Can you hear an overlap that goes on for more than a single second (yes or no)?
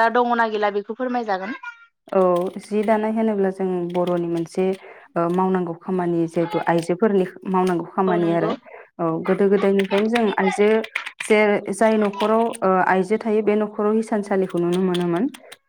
no